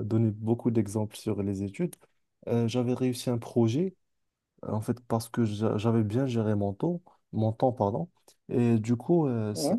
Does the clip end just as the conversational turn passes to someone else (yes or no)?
no